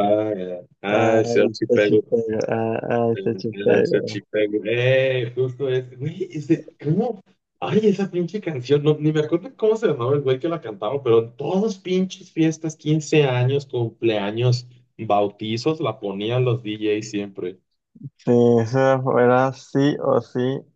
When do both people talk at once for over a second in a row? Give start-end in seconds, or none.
0.9-2.1